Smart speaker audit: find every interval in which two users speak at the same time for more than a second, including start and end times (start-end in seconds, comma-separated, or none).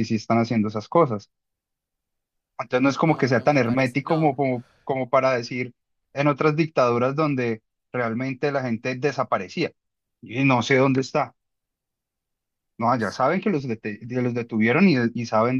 2.7-4.4